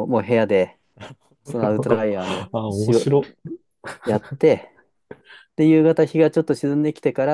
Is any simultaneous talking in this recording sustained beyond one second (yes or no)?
yes